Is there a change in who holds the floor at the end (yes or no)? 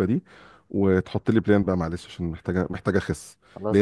no